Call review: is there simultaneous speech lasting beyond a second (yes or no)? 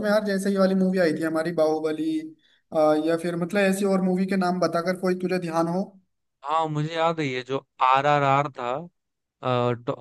no